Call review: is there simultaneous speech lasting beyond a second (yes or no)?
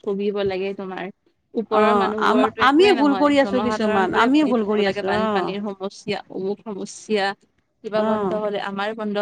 yes